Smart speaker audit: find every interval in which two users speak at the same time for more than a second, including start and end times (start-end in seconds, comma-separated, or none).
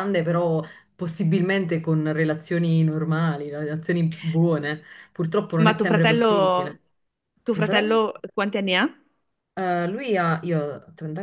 5.6-6.8